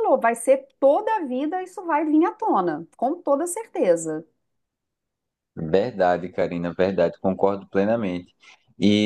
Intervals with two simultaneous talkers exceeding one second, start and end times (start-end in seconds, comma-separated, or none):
none